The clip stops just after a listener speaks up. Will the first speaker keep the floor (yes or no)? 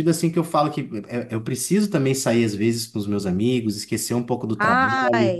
yes